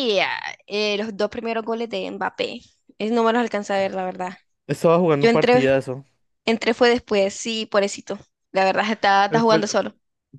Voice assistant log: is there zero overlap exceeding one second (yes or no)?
yes